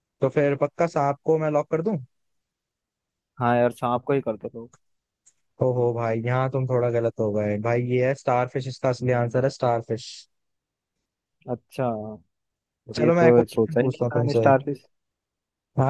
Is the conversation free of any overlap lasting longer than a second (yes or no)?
no